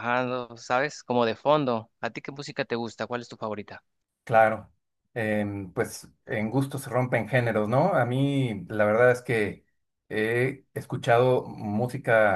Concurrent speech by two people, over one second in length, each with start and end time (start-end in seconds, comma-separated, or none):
none